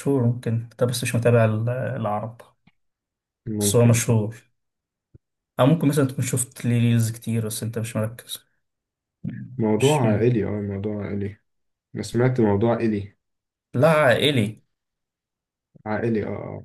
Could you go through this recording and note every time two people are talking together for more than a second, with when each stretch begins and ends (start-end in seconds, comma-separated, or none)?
none